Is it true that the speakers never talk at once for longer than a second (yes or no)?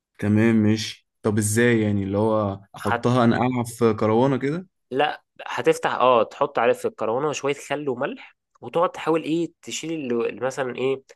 yes